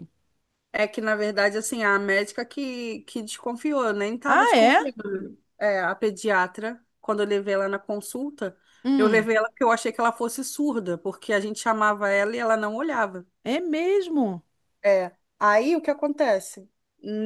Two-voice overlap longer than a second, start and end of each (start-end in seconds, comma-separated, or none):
none